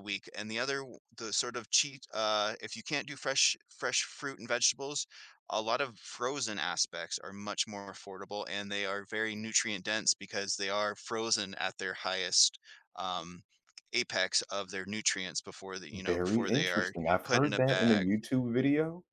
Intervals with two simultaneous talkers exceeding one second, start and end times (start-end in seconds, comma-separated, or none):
15.9-18.1